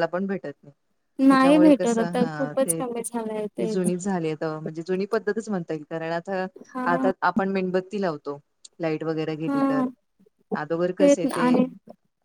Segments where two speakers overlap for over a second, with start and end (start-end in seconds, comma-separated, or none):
1.3-2.8